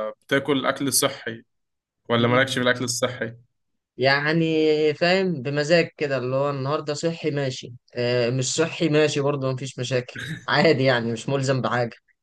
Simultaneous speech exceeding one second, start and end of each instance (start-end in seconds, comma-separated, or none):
none